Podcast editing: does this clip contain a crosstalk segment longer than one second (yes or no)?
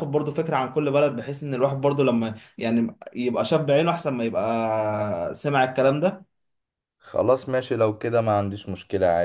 no